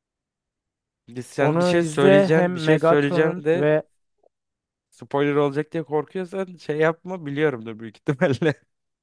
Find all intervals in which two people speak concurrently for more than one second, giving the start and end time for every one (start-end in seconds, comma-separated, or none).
1.4-3.7